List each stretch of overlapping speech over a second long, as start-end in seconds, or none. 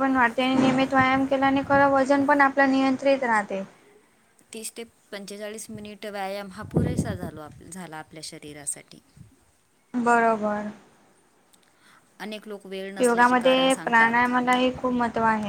13.0-14.3